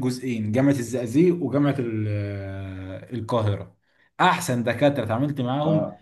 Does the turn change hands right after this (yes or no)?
no